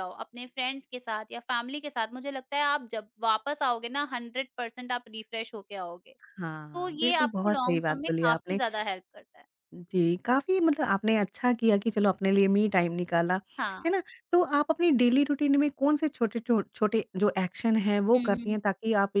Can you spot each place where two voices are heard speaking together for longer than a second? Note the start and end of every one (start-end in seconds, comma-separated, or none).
6.7-8.6